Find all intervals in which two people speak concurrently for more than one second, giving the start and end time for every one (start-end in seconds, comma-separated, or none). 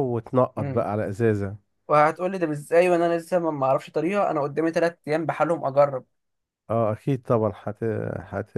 none